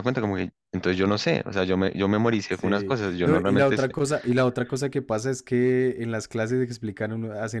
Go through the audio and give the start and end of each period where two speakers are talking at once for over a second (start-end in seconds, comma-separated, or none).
2.5-4.0